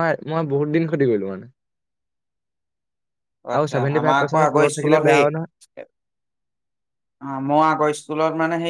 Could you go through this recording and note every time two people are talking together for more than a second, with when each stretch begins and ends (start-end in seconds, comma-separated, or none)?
3.6-5.5